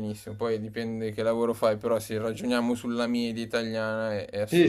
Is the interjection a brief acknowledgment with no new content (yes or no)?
no